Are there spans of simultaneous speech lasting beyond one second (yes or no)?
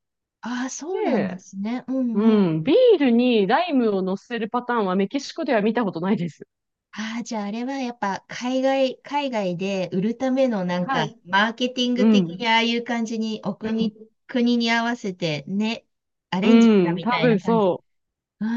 yes